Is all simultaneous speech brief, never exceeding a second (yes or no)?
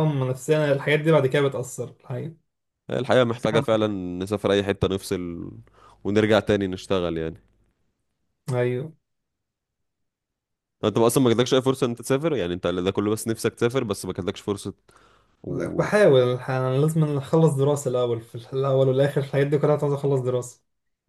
yes